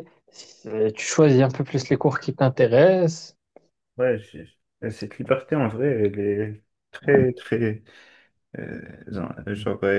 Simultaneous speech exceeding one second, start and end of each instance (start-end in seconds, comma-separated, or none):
none